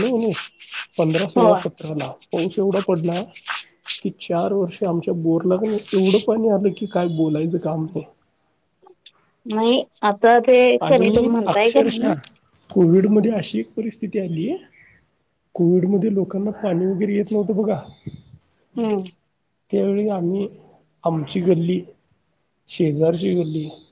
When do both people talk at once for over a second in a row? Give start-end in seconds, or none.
none